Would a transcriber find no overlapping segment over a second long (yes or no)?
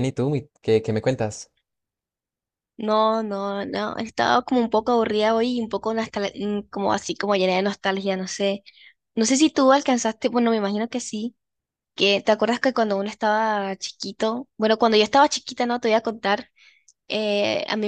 yes